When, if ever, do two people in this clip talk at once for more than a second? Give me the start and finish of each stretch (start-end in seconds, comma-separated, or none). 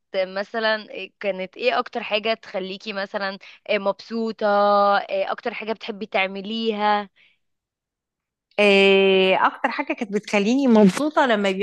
none